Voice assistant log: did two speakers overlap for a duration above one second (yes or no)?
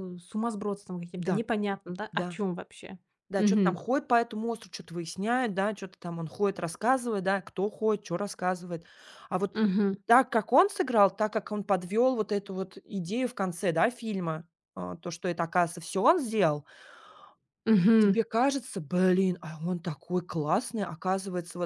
no